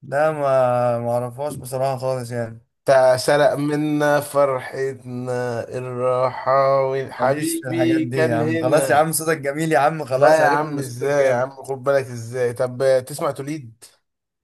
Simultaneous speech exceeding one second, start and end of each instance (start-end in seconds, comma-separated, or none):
7.2-9.0, 10.1-11.5